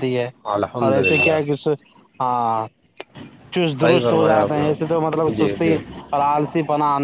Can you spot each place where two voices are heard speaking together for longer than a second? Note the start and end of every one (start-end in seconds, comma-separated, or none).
3.8-5.7